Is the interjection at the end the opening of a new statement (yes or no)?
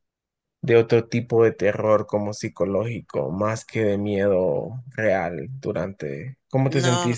yes